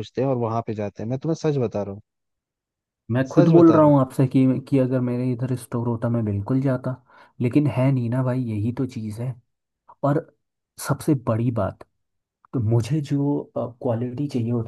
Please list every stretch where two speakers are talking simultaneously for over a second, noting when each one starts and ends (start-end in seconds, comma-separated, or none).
none